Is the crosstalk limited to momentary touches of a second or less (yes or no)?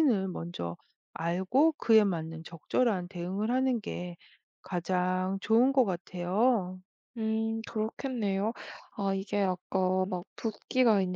yes